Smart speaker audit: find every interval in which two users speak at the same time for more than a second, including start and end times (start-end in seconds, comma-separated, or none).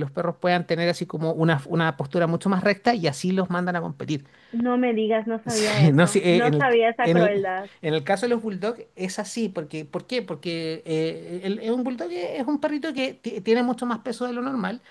5.5-7.4